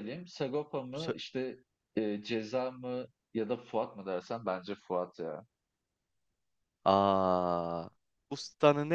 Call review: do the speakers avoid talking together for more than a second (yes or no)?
yes